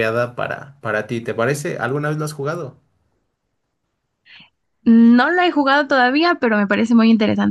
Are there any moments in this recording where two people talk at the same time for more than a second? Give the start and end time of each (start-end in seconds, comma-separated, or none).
none